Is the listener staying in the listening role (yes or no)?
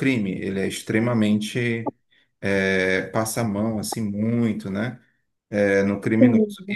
yes